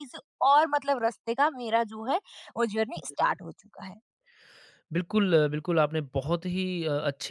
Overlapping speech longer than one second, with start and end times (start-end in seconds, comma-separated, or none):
none